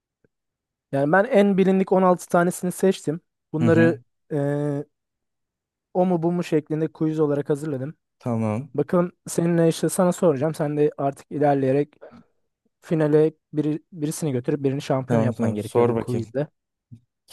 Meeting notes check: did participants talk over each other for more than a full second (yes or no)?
yes